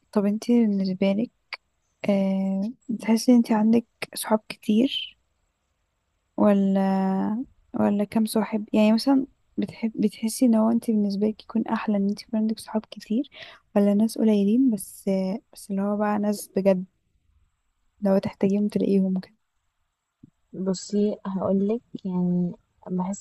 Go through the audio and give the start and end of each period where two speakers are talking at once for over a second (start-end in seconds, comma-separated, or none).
none